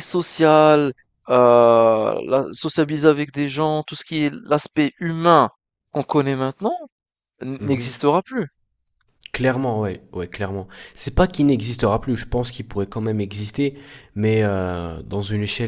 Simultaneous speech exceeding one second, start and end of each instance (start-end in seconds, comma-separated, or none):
none